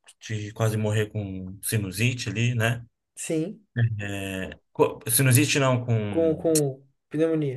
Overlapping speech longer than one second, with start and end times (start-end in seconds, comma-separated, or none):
none